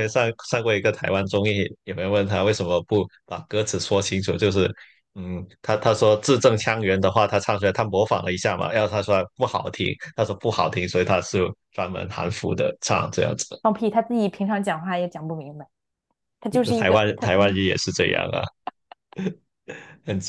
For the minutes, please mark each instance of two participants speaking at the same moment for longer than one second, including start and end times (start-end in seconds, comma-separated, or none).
none